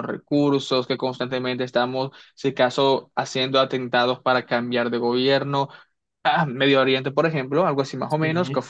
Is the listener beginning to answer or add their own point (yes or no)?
no